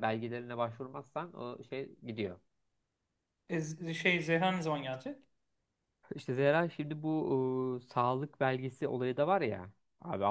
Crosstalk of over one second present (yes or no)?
no